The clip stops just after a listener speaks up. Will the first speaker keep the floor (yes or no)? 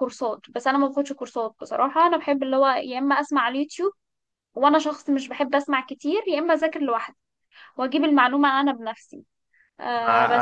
no